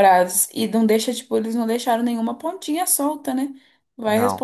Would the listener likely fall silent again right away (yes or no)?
yes